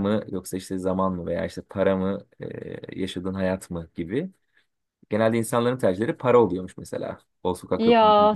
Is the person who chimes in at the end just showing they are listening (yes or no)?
no